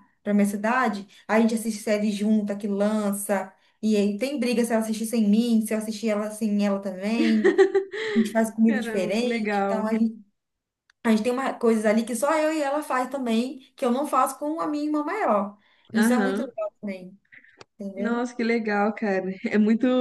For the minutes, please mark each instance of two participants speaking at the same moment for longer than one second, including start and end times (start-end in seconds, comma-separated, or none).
8.7-9.9